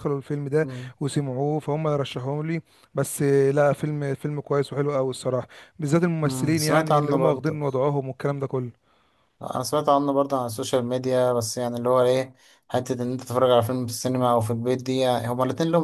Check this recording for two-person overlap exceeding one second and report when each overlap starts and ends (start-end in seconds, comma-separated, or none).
6.2-7.6